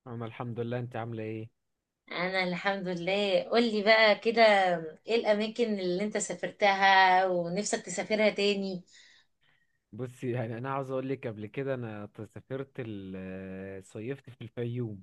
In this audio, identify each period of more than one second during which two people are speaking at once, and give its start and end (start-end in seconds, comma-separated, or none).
none